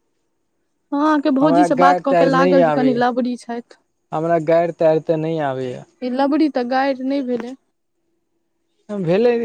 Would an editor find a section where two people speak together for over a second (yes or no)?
no